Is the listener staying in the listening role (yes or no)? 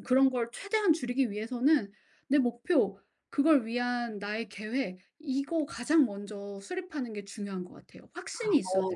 no